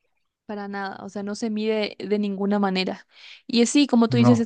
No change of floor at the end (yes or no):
yes